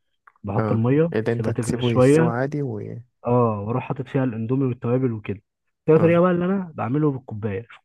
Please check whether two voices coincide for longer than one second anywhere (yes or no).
yes